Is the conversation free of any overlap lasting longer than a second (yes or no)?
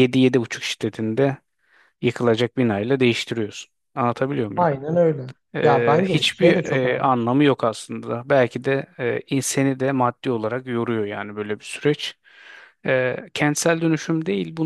no